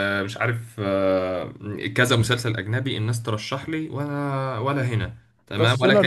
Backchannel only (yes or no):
no